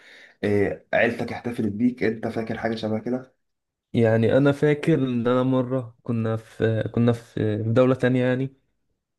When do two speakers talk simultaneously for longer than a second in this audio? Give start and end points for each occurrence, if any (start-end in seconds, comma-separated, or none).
none